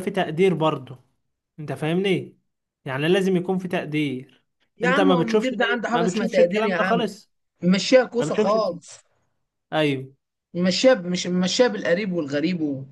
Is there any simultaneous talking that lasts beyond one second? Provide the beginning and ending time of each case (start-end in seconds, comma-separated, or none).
4.8-7.1